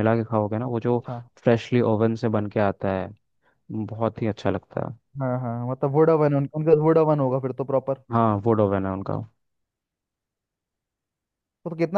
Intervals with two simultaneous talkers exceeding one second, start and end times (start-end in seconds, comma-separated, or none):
none